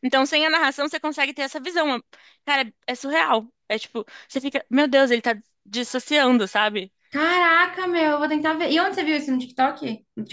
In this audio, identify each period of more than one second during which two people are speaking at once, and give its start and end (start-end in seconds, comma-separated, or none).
none